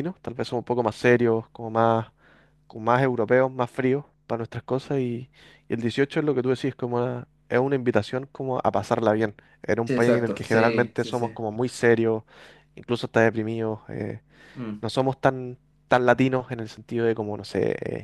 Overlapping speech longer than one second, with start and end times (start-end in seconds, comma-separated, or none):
9.8-11.3